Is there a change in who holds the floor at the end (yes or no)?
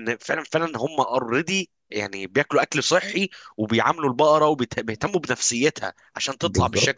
yes